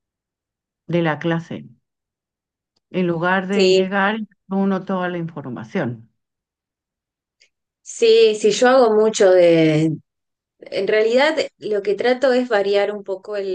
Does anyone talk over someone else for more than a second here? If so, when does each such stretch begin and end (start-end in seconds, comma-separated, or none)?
none